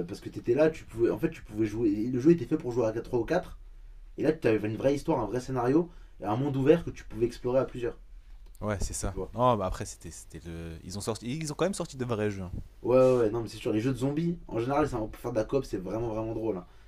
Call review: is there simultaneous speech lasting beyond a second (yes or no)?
no